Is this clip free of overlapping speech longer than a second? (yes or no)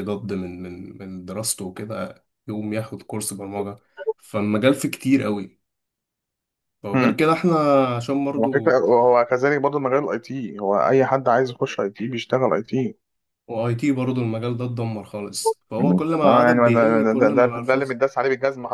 no